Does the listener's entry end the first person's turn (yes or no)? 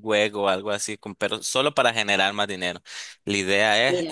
no